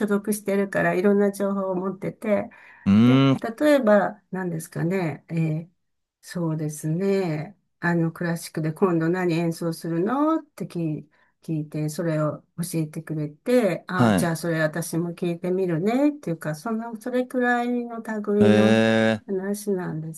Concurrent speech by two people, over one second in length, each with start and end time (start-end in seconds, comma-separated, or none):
none